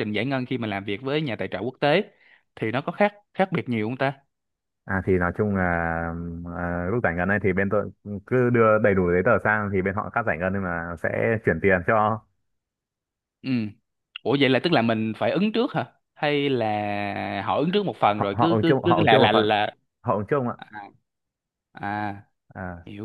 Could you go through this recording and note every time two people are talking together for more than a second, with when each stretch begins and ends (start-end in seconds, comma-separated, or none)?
18.1-19.5